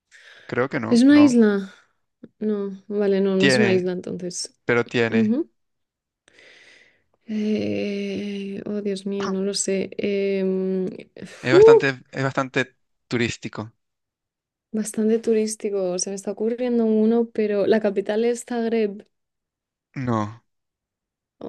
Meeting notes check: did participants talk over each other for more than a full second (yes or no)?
no